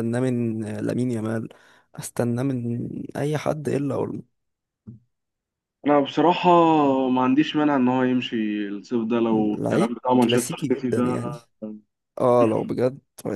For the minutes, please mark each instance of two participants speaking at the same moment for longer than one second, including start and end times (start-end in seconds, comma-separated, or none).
9.3-11.0